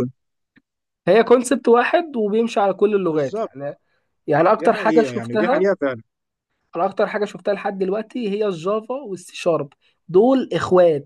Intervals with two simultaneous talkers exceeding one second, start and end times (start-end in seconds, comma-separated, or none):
4.5-5.7